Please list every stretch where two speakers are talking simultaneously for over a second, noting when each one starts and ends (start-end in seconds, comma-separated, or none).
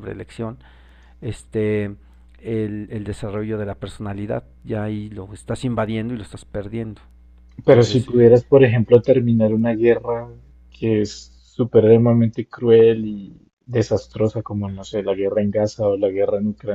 none